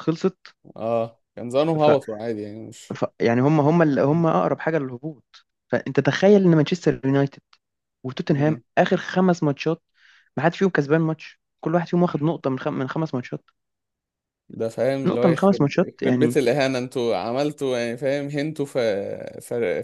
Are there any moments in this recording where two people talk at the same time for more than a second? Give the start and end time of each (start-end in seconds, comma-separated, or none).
15.1-16.4